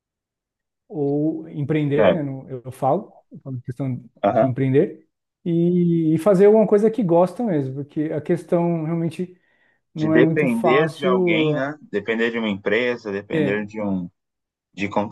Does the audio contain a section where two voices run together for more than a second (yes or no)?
yes